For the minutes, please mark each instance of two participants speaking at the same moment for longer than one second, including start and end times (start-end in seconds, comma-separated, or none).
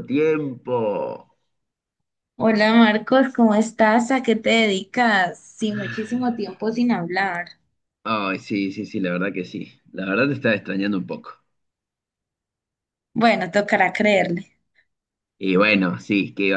none